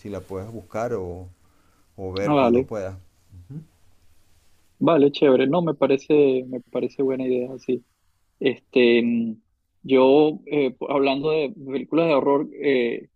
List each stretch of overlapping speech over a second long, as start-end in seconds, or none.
none